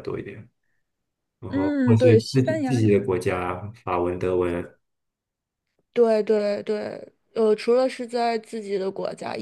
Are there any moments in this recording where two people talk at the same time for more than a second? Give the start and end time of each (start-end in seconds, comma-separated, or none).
1.5-3.1